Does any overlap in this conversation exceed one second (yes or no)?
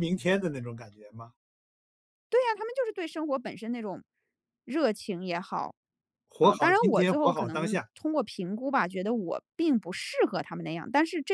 yes